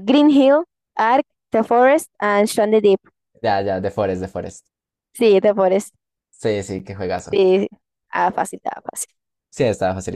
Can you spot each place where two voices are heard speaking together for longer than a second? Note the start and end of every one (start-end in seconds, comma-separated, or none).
none